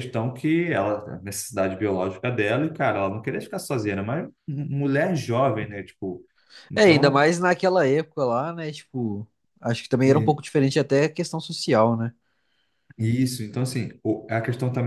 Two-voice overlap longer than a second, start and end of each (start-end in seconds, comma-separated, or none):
none